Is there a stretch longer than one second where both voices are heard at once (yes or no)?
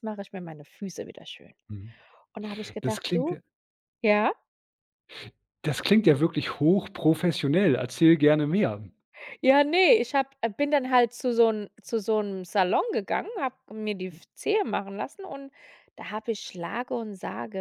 no